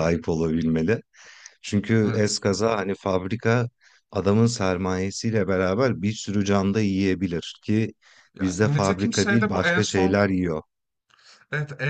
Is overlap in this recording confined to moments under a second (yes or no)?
no